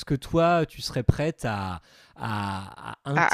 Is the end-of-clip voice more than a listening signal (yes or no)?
no